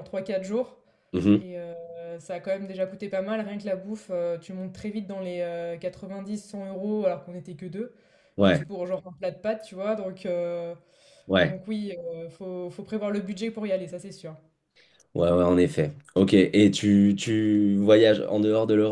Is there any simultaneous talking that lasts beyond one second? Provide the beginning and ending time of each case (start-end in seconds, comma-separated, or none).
none